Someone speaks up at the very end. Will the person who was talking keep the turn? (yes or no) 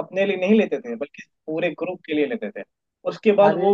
yes